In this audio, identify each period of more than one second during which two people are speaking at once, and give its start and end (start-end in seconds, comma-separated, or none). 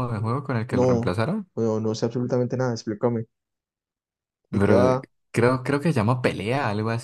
none